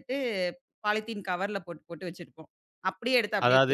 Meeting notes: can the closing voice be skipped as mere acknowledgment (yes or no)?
no